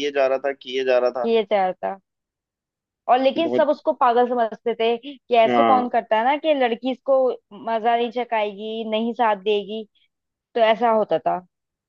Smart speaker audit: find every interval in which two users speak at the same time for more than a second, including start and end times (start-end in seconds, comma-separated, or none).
none